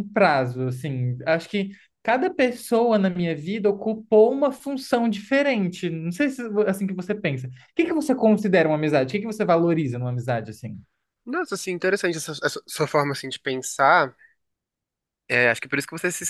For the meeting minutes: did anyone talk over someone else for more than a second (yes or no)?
no